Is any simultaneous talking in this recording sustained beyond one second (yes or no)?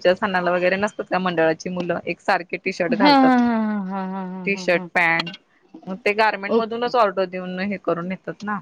no